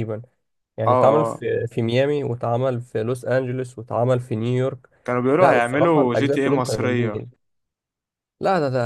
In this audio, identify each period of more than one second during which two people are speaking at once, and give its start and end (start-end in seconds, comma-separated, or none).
5.4-7.2